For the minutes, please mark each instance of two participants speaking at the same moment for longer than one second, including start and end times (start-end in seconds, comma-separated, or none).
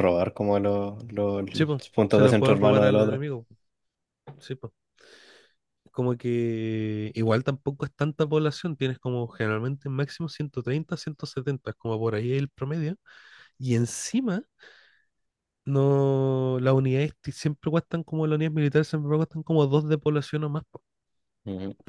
1.9-3.2